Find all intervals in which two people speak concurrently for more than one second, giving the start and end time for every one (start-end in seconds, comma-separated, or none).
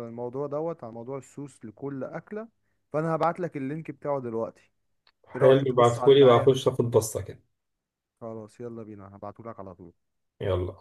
5.3-6.5